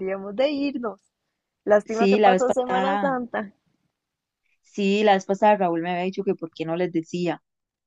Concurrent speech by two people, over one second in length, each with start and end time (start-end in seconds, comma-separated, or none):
1.8-3.2